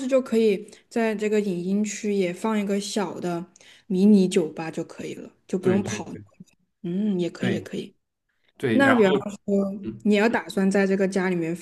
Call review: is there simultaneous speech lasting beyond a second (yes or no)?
no